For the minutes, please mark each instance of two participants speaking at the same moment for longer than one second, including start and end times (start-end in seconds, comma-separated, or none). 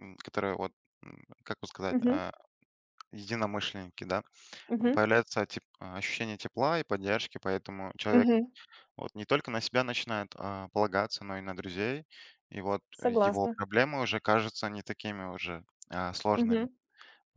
none